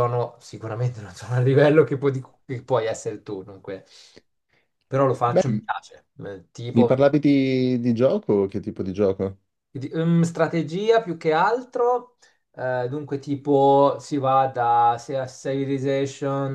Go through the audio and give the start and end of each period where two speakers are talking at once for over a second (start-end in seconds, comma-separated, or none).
none